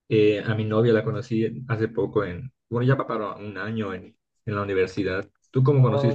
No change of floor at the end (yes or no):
no